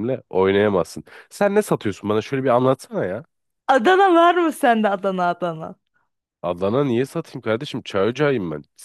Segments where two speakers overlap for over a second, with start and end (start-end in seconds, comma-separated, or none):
none